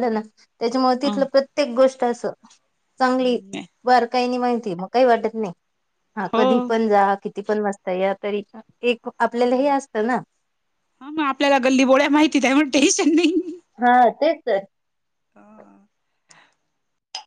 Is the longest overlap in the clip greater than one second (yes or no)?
no